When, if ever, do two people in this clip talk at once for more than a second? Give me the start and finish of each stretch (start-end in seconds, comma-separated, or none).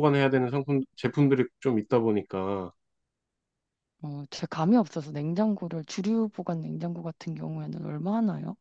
none